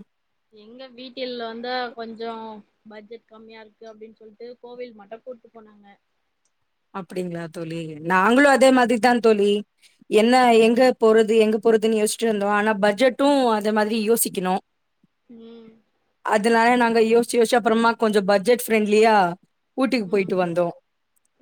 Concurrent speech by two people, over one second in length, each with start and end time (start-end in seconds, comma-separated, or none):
none